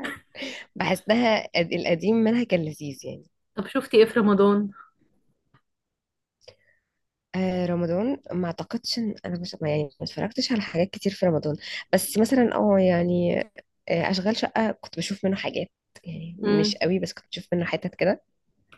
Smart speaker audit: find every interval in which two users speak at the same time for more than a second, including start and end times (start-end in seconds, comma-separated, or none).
none